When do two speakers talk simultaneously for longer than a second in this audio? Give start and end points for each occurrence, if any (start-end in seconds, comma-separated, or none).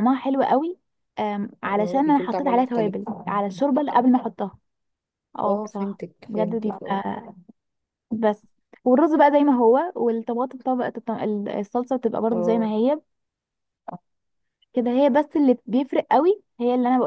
1.6-2.9, 5.4-7.0